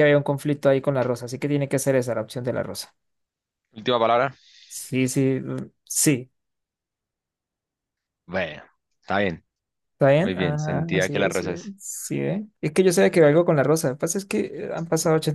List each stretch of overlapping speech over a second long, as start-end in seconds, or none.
10.2-11.7